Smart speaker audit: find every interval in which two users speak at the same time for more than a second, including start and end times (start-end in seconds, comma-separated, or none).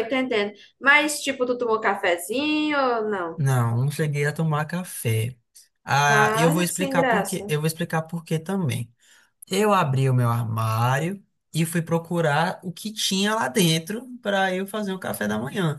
6.1-7.5